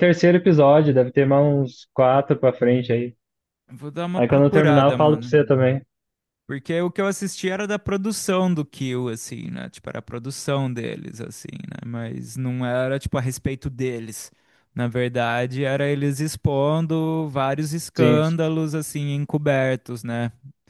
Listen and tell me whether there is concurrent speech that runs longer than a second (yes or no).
yes